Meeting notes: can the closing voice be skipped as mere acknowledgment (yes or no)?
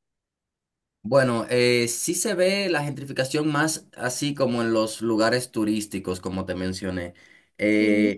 yes